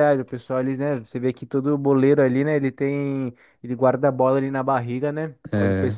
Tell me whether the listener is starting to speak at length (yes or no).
no